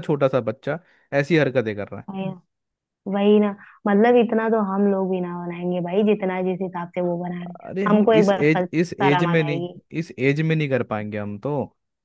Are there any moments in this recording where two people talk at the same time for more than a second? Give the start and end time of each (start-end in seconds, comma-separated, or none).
7.6-9.7